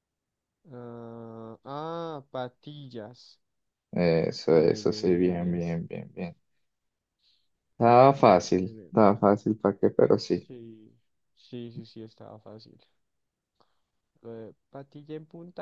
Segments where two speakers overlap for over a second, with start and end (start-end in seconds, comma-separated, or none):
4.5-5.8